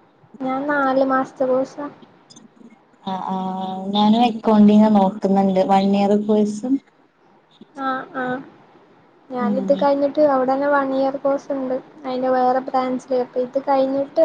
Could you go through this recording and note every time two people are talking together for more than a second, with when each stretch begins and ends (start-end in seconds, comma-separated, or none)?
none